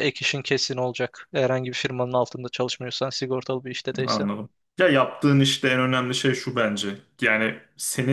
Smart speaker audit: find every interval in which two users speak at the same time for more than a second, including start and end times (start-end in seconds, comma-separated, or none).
none